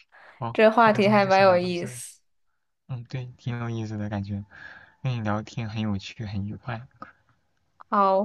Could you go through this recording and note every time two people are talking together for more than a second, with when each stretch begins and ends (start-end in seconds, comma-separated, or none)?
0.5-2.0